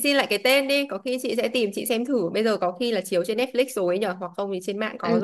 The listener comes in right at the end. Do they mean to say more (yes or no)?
yes